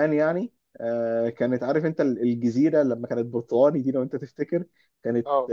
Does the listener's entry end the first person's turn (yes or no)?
no